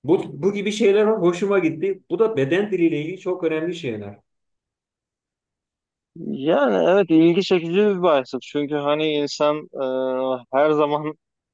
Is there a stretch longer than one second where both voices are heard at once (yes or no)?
no